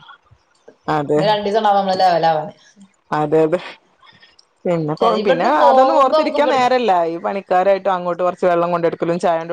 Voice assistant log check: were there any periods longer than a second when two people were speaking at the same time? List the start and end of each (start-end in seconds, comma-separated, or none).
4.9-6.7